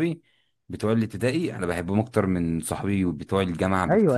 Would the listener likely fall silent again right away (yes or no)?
no